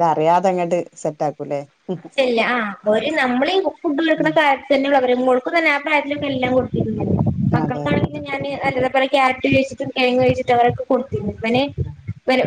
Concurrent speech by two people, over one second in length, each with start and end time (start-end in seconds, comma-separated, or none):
none